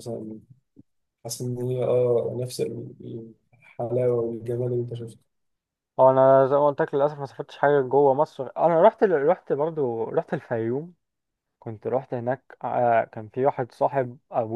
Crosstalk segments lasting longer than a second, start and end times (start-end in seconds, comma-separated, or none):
none